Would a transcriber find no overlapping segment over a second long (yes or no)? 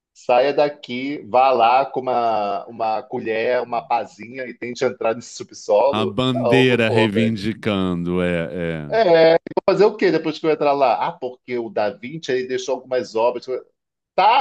no